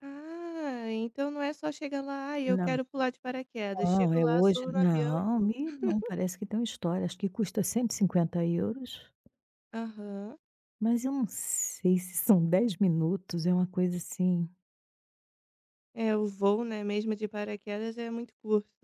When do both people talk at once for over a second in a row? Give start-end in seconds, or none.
3.8-5.5